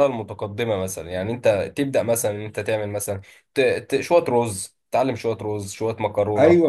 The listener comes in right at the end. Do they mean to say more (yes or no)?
yes